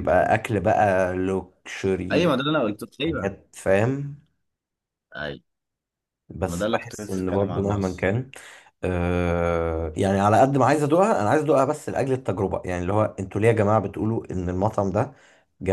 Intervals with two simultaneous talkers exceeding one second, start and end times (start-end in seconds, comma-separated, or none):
6.4-8.1